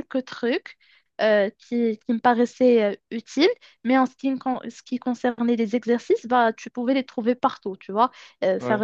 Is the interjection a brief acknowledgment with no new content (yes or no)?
yes